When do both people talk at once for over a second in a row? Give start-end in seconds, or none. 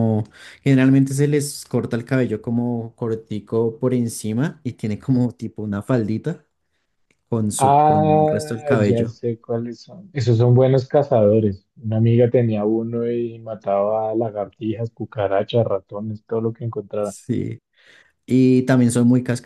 7.6-9.2